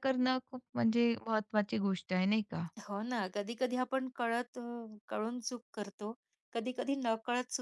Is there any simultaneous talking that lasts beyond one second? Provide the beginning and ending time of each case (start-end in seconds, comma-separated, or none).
none